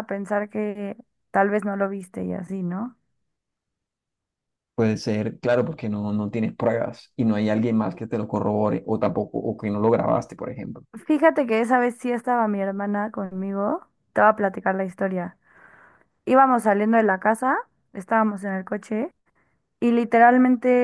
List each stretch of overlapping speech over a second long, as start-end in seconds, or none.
none